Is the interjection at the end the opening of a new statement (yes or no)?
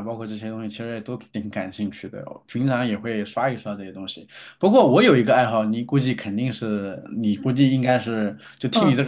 yes